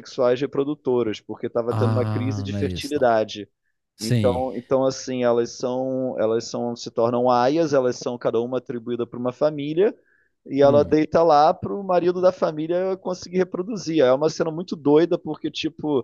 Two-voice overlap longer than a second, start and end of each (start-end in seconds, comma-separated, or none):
1.7-3.0